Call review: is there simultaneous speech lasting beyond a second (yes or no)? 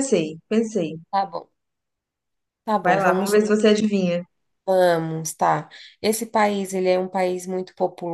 no